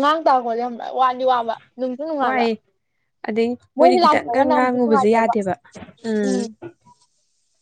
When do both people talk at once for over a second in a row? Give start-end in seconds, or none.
3.8-5.3